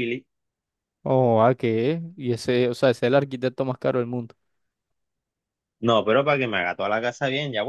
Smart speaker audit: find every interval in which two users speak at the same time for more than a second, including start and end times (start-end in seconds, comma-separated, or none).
none